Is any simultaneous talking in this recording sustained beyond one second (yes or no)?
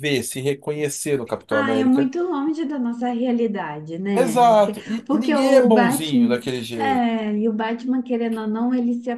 yes